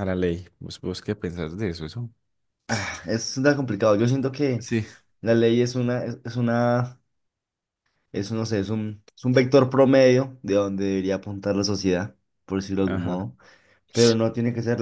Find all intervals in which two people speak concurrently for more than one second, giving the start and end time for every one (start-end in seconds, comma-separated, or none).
none